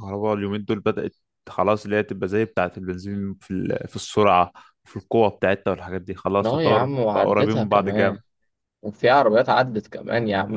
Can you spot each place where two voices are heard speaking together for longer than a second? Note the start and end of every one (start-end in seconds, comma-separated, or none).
6.4-8.2